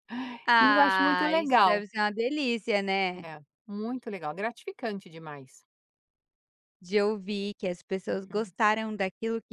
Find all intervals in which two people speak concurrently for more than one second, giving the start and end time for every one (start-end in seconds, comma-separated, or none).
0.6-1.8